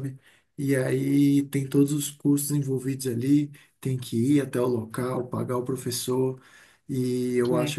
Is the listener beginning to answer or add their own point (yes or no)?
no